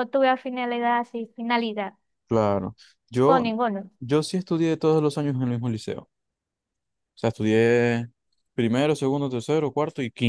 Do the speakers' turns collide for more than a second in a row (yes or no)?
no